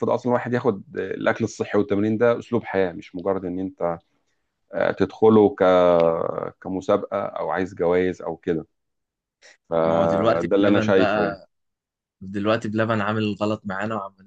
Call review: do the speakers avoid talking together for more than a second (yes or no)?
no